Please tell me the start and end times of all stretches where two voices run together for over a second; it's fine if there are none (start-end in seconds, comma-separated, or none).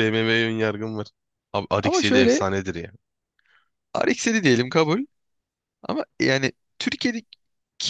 none